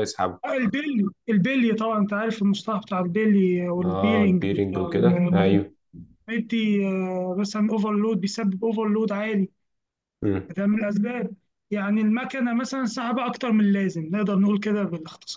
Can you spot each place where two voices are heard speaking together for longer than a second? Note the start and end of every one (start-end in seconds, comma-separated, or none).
3.8-5.6